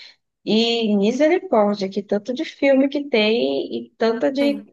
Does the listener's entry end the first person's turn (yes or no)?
no